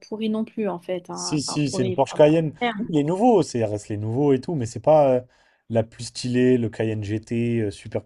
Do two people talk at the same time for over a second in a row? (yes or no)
yes